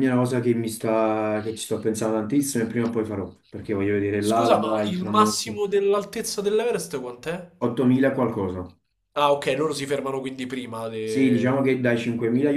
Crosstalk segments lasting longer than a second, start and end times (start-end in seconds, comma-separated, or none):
4.1-5.6